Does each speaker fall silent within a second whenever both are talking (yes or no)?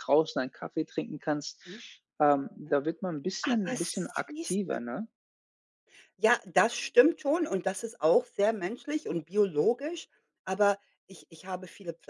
no